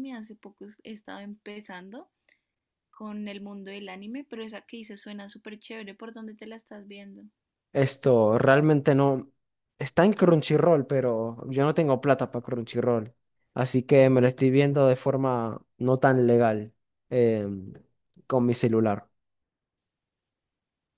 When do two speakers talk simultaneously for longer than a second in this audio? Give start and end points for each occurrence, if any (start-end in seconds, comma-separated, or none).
none